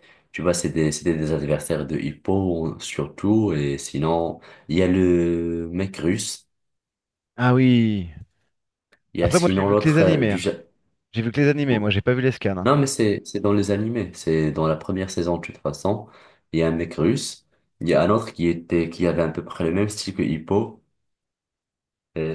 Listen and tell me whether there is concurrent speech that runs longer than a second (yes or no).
yes